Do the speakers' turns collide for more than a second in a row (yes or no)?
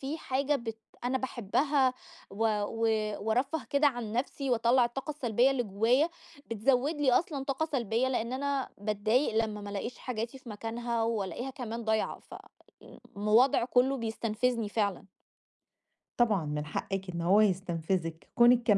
no